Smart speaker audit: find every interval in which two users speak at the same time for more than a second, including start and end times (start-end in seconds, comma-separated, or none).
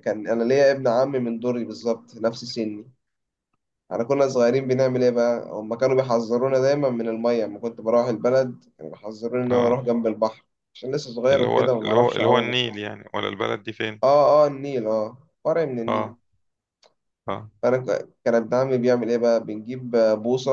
11.3-12.8